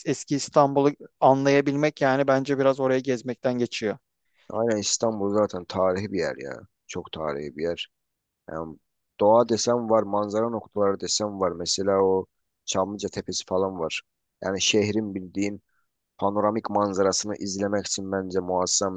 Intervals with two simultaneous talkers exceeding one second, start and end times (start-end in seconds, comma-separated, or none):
none